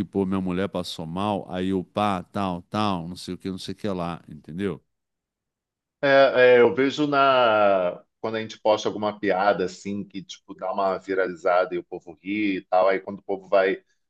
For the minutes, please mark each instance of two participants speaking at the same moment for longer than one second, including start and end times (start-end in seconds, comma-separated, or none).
none